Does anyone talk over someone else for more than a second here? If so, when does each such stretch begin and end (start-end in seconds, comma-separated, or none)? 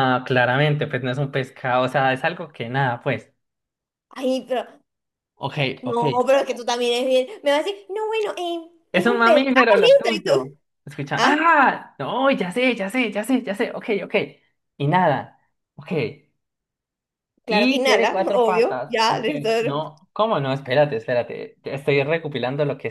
8.9-10.5, 17.5-19.5